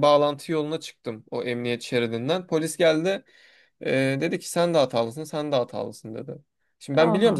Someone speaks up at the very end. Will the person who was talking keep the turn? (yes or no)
yes